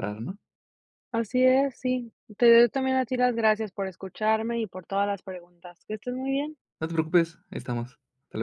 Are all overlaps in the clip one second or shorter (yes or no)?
yes